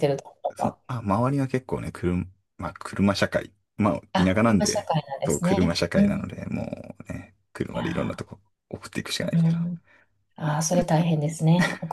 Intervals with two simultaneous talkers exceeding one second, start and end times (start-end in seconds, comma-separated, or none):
4.1-6.3